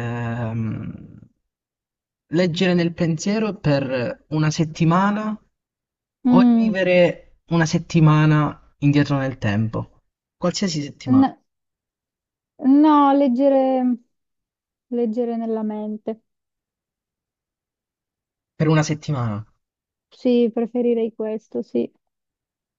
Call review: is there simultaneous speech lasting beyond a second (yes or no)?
no